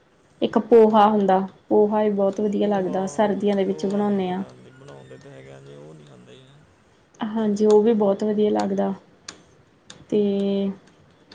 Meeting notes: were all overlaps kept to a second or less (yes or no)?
no